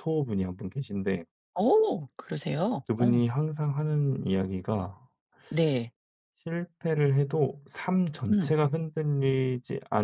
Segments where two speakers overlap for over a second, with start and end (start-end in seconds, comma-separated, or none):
none